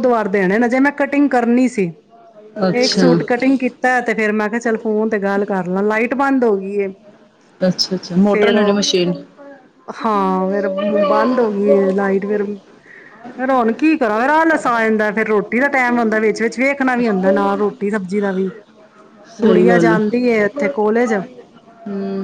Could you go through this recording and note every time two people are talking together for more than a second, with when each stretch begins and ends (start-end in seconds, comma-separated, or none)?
none